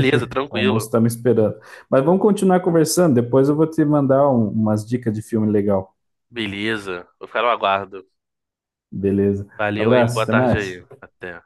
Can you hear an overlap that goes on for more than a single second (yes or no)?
yes